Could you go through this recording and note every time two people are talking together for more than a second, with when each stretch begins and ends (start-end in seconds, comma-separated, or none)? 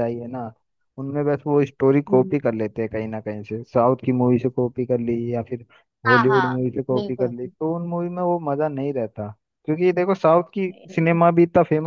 6.1-8.1